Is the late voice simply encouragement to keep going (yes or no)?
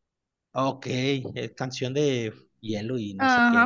no